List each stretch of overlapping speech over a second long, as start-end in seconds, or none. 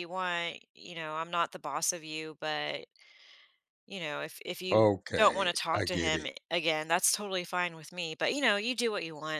4.7-6.3